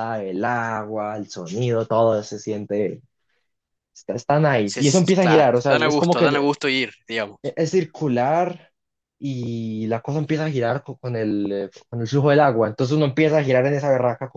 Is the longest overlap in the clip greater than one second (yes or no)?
yes